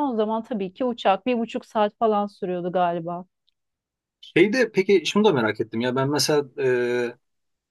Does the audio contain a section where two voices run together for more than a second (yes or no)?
no